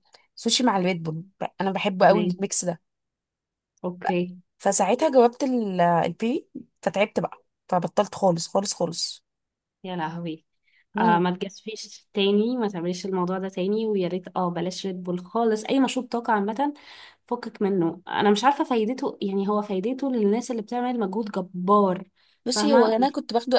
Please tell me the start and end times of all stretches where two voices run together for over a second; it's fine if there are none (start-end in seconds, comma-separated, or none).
none